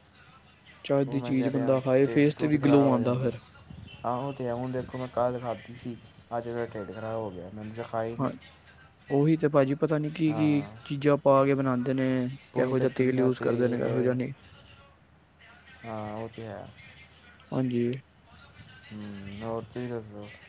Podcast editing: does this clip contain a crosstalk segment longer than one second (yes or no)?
yes